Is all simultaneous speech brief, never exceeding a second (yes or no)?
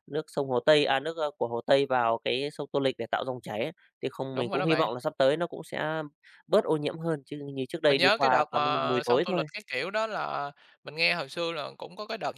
no